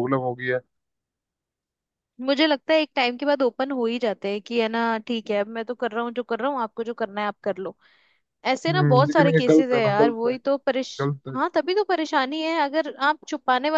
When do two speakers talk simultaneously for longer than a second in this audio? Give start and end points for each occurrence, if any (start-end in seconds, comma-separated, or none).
8.7-10.3